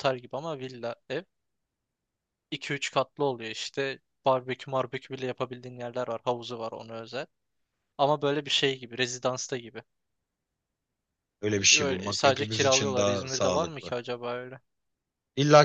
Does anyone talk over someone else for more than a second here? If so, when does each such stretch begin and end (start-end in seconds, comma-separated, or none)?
11.5-13.9